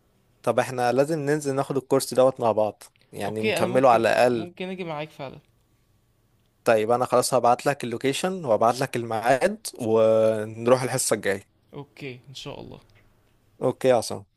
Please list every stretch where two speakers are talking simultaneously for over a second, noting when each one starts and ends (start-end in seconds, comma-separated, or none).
3.2-4.5